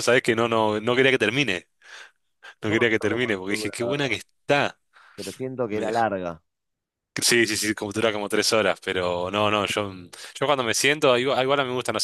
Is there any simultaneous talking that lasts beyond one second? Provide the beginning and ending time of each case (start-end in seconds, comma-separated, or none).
2.7-4.2